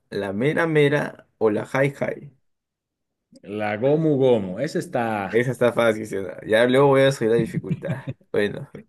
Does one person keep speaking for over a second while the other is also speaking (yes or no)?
no